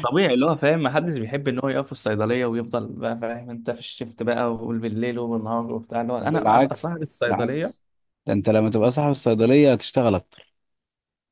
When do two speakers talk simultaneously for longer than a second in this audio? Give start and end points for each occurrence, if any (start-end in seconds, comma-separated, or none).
6.2-7.7